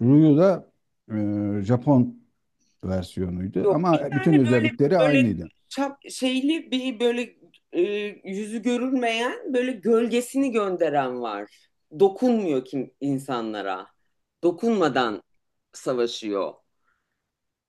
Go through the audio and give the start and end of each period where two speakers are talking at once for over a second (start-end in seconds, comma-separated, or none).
3.6-5.3